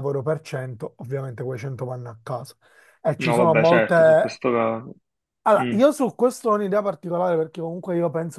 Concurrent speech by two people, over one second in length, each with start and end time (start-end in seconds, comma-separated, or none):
3.2-4.4